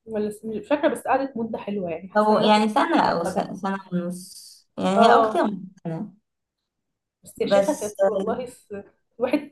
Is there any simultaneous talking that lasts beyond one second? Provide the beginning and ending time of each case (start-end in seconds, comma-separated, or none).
2.2-3.5